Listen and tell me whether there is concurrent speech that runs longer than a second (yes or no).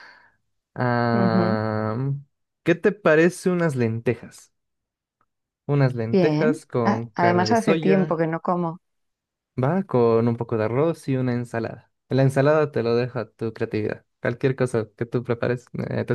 yes